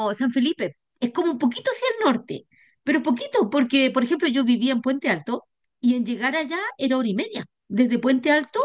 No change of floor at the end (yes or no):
no